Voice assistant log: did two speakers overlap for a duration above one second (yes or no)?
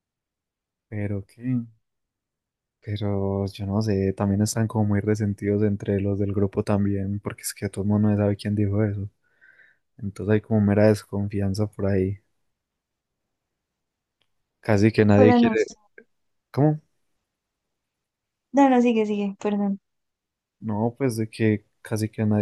no